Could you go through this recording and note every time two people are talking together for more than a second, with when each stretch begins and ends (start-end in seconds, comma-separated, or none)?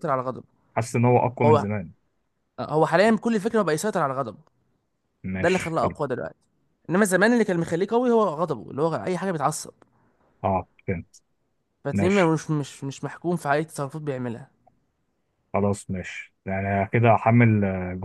none